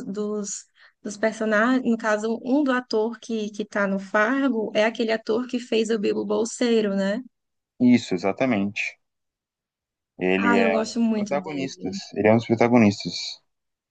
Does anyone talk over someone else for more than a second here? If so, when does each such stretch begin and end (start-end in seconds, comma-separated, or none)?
10.4-12.0